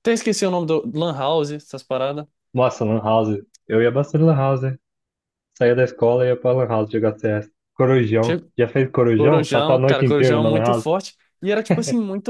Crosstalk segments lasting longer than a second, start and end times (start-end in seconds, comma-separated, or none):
9.2-10.8